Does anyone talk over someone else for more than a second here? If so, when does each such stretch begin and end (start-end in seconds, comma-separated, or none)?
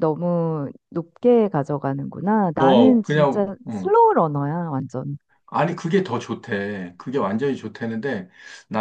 2.6-3.9